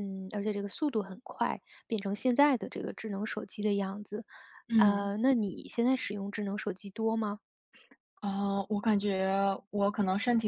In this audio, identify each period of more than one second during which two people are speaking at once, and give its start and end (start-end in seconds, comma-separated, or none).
none